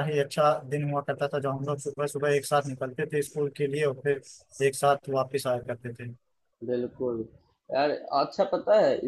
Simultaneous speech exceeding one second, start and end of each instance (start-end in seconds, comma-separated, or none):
none